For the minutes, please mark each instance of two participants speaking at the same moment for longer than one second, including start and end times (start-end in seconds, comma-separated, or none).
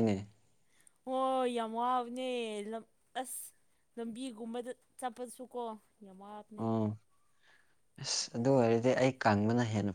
none